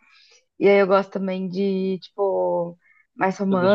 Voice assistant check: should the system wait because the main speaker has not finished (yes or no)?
yes